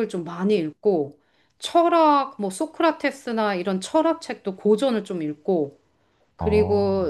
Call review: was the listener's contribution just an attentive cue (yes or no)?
yes